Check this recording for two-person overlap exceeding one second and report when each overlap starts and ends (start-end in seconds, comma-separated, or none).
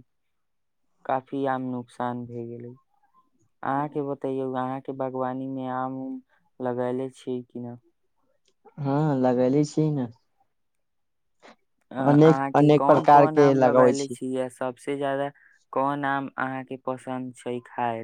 12.1-14.2